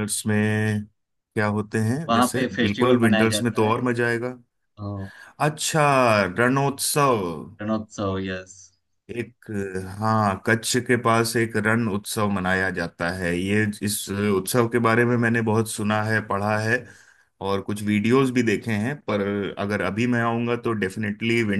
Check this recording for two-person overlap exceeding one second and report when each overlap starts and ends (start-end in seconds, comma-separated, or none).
2.1-3.8